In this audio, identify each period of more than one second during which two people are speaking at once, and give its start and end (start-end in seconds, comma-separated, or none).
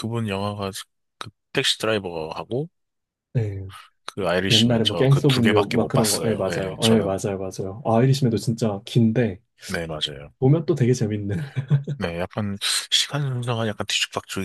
4.5-7.2